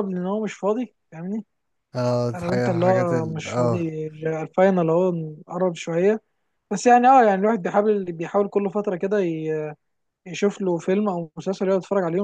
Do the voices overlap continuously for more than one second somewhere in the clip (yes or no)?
yes